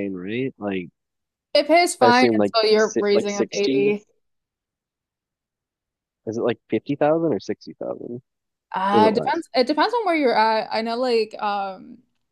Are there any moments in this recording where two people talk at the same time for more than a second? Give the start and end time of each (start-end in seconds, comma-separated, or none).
2.0-3.9